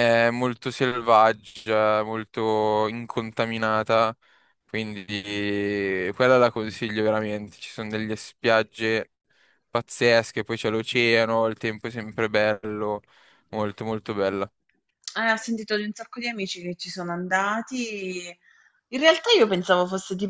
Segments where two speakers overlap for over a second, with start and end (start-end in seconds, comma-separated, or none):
none